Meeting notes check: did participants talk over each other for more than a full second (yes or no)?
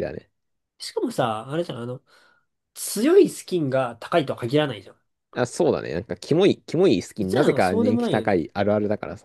yes